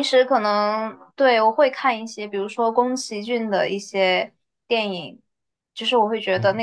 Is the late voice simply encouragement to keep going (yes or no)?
yes